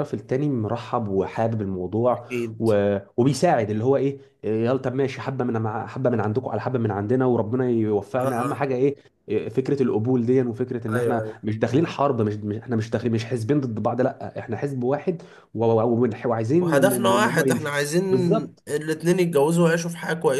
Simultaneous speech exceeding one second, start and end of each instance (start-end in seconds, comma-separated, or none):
16.6-18.0